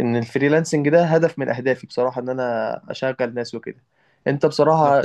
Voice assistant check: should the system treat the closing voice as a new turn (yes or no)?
no